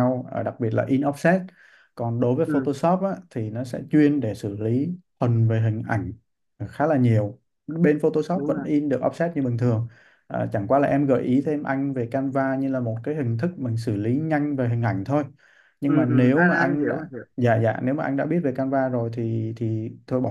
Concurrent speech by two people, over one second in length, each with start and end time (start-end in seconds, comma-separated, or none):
15.8-17.2